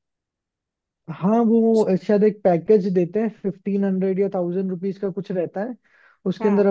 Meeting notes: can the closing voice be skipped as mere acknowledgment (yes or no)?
yes